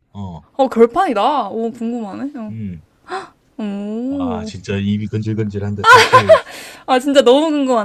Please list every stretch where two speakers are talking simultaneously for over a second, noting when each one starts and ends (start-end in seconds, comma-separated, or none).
none